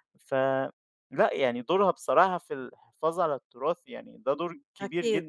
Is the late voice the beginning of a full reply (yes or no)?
yes